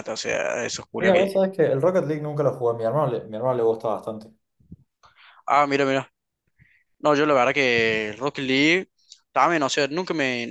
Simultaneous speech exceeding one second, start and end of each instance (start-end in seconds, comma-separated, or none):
none